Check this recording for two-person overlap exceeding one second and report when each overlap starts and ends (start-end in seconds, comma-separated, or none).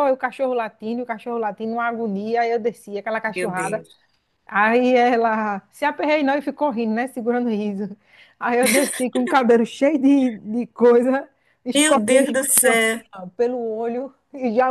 11.7-13.0